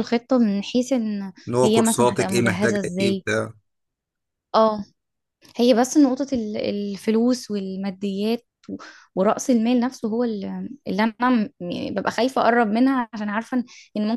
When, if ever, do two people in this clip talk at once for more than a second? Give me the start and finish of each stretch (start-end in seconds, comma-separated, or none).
1.5-3.2